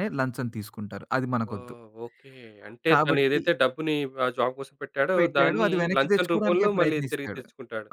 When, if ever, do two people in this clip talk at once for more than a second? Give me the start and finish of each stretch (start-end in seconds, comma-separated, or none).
5.2-7.4